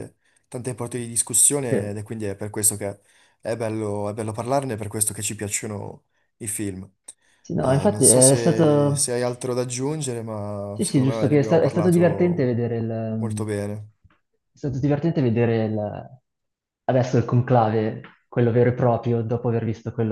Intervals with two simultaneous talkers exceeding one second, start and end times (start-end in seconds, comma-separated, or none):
7.6-9.2, 10.7-12.5